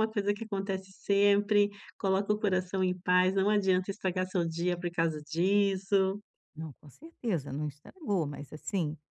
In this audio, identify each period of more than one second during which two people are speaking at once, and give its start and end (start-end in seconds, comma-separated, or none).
none